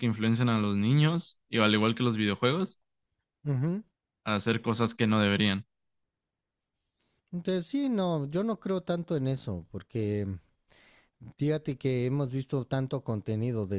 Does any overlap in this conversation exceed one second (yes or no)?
no